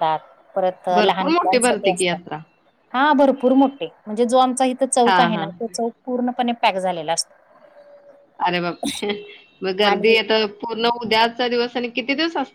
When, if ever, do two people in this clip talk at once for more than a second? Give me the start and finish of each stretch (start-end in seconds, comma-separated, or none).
1.0-2.2